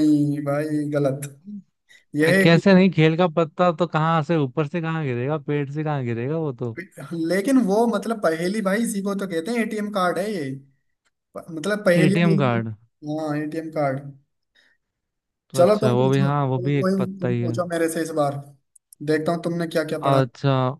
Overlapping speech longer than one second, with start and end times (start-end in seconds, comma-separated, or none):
15.6-17.6